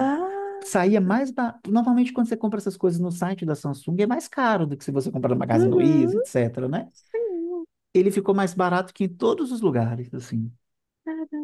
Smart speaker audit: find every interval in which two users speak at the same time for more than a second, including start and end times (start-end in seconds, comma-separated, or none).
none